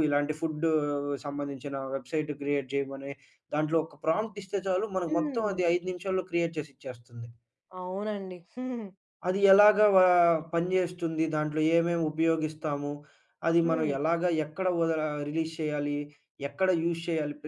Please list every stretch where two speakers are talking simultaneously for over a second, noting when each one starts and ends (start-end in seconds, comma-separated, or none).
none